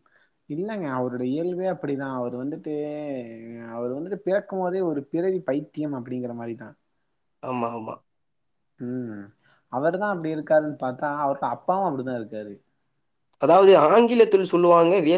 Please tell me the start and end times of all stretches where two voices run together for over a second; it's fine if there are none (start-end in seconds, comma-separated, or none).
none